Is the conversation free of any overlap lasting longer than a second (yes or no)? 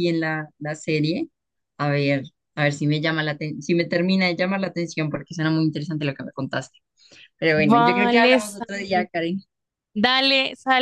no